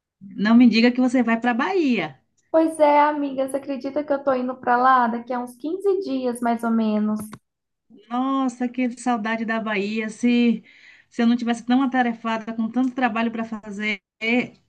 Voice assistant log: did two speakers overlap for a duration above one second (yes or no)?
no